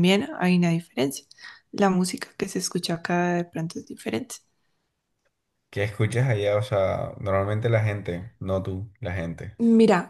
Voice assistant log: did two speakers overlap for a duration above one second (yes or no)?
no